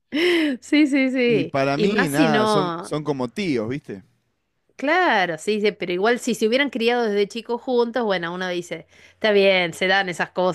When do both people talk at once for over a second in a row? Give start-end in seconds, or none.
1.2-2.9